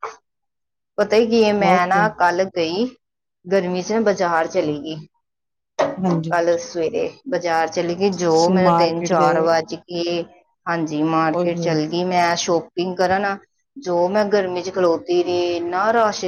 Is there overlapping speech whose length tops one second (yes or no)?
yes